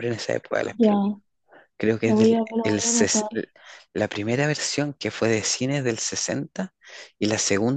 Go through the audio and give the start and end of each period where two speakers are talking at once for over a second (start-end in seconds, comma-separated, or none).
2.0-3.2